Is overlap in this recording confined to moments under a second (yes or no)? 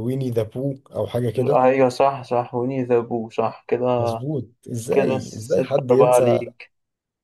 no